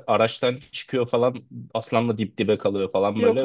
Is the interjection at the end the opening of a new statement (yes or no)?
no